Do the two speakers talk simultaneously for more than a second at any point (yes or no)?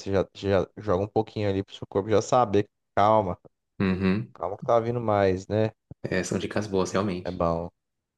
no